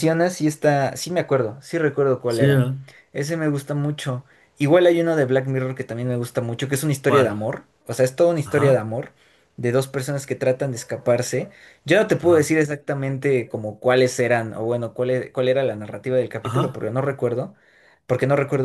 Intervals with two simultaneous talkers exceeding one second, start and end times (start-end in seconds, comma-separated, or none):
none